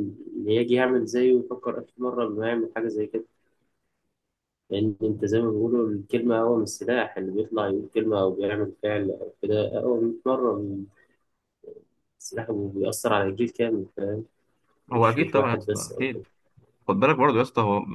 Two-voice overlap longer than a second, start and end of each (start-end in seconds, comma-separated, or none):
14.9-16.2